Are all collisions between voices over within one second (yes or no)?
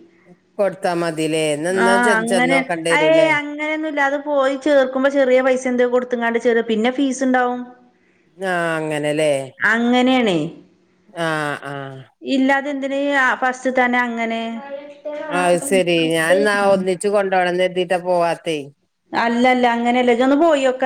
yes